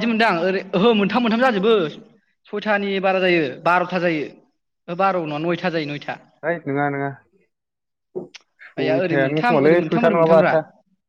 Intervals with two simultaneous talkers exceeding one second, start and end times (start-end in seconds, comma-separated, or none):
8.8-10.5